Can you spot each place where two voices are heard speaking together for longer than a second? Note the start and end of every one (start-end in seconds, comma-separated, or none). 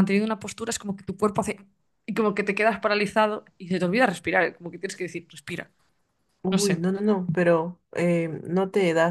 none